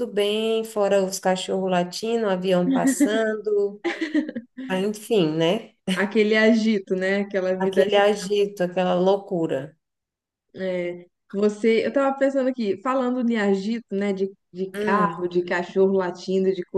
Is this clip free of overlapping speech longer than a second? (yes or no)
yes